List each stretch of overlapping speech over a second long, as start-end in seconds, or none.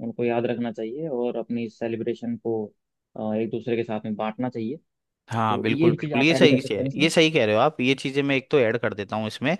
5.5-7.1